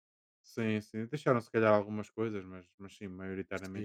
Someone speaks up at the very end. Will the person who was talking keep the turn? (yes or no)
no